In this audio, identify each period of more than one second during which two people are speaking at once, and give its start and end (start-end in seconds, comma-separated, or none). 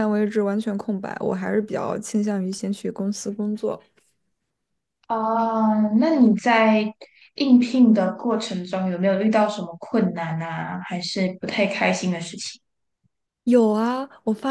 none